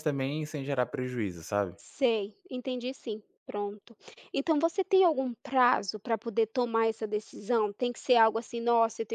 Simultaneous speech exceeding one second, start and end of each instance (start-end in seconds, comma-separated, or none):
none